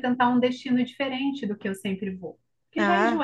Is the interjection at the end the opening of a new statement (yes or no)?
no